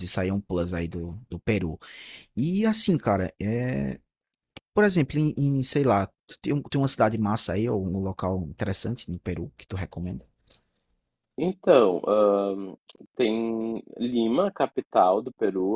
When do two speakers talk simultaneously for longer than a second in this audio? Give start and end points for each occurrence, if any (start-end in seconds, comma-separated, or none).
none